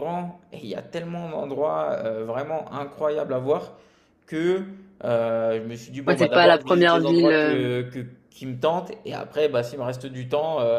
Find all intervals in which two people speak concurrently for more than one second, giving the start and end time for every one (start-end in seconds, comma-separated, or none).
6.1-7.7